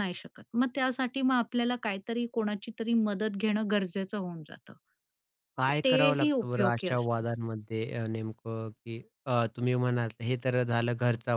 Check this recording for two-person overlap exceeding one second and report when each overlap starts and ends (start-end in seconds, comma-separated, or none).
5.7-7.2